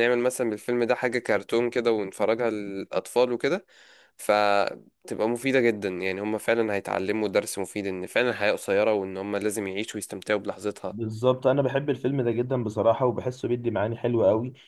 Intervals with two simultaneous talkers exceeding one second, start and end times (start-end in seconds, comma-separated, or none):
none